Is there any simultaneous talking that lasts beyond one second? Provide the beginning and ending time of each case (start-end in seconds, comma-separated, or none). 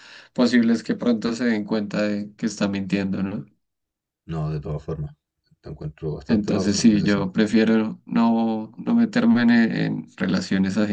6.3-7.5